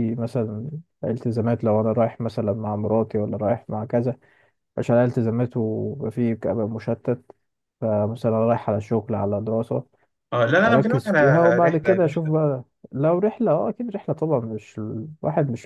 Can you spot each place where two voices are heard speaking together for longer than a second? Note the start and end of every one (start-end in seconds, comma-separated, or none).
10.6-12.3